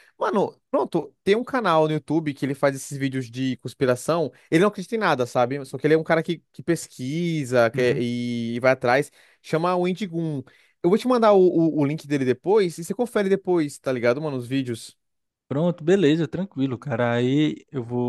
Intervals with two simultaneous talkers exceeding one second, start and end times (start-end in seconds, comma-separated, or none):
none